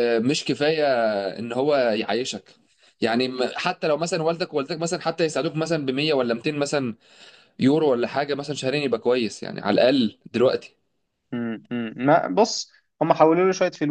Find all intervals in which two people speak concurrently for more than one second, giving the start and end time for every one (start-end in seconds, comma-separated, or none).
none